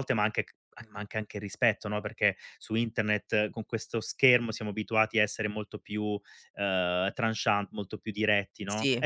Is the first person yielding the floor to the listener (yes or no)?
no